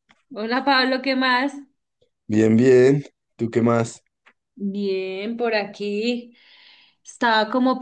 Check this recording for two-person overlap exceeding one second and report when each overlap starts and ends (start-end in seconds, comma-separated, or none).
none